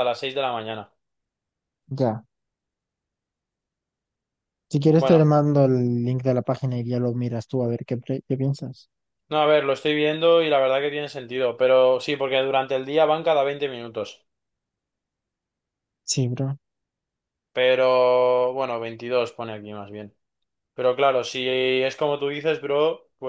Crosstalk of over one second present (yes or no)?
no